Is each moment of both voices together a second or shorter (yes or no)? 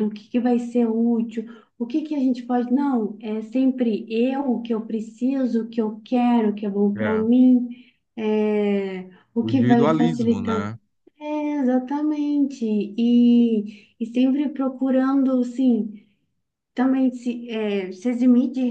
no